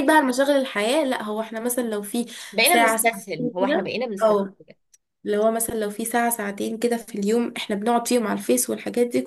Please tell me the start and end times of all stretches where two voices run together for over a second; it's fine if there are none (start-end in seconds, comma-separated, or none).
2.6-4.4